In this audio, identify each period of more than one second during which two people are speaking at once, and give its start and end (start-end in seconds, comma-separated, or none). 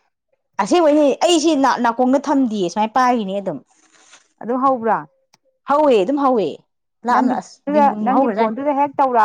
none